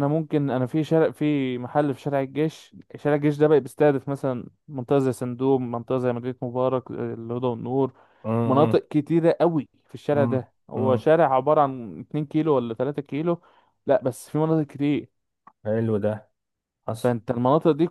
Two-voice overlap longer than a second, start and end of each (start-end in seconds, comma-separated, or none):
none